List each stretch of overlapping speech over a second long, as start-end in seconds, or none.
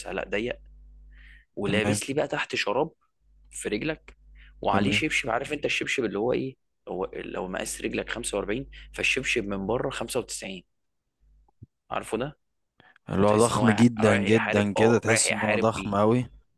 13.2-15.9